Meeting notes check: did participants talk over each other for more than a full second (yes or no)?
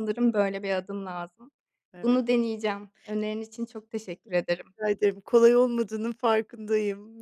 no